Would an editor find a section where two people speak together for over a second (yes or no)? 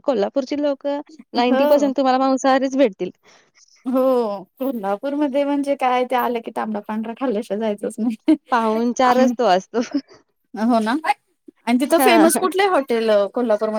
no